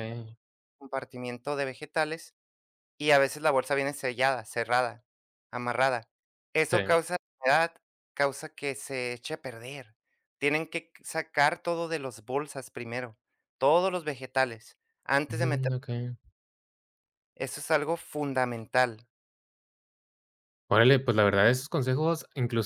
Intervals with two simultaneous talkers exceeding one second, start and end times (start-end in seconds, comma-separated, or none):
none